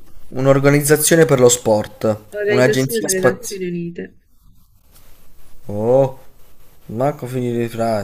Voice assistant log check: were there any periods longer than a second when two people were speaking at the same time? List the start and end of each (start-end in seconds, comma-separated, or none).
2.3-3.6